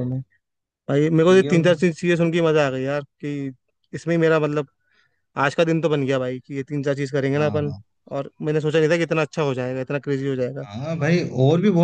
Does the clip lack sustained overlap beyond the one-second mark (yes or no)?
yes